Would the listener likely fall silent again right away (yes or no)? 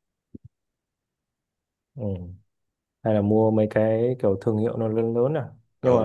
no